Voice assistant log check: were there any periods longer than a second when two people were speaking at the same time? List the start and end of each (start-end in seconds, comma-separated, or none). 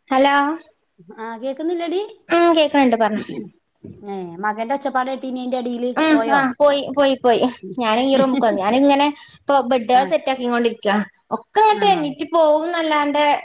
none